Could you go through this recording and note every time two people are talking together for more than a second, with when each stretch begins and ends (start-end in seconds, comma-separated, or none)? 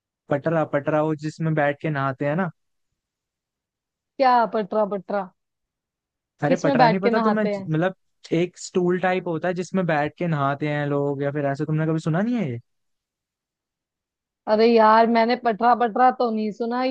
6.5-7.7